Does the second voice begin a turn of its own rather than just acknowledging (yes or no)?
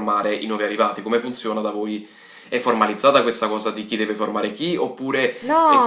yes